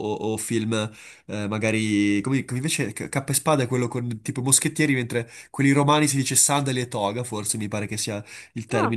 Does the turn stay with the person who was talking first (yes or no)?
yes